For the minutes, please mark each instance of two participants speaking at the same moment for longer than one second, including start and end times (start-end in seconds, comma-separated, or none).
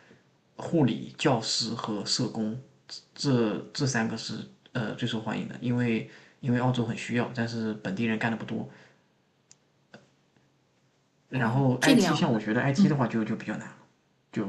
11.3-13.0